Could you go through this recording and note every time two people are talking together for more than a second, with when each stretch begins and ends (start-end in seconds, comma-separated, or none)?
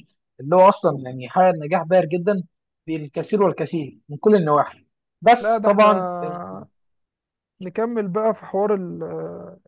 none